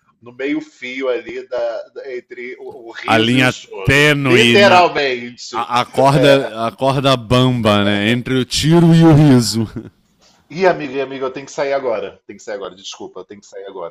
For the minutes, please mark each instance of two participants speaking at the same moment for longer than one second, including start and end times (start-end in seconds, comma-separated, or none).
3.1-4.9